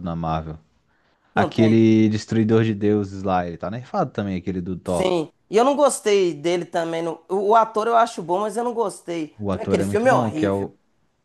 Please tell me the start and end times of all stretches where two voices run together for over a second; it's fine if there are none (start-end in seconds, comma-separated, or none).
9.4-10.7